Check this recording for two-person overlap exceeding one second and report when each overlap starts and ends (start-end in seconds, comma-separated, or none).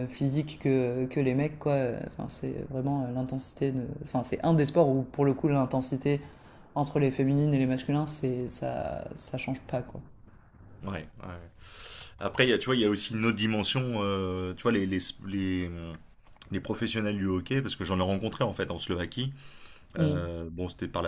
none